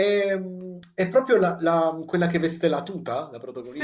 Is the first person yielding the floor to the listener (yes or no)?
yes